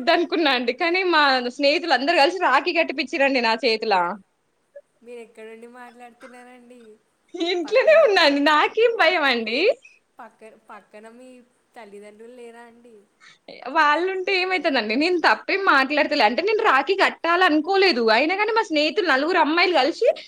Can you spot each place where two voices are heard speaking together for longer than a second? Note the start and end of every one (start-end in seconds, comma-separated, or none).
none